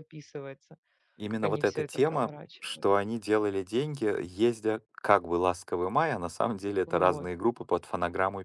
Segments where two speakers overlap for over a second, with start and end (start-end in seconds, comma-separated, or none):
1.3-3.0